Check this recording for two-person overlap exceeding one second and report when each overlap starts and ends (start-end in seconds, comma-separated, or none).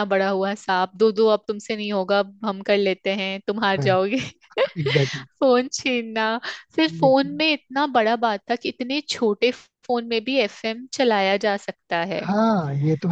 none